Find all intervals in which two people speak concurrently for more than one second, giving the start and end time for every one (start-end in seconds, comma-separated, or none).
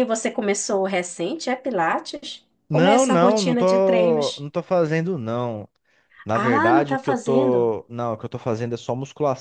2.7-4.5, 6.3-7.7